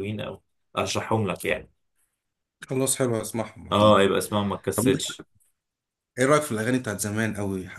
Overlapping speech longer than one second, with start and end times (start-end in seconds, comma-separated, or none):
none